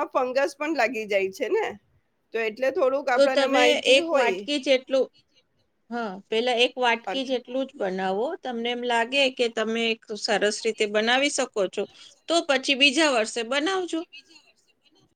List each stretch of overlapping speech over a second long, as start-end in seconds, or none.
none